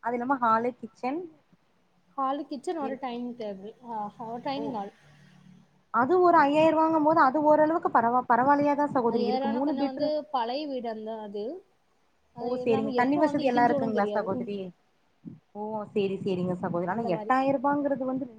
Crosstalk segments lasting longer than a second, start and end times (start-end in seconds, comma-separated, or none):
12.4-14.5